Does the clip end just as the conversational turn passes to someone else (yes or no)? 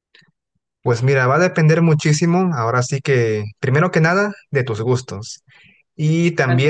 no